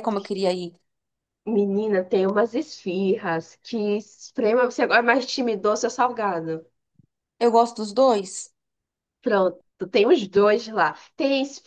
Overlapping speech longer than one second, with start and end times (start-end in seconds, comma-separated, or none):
none